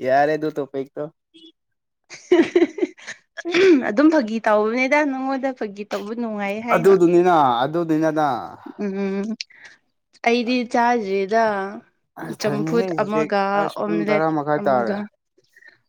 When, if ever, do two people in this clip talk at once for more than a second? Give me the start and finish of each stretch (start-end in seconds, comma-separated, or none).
12.4-15.0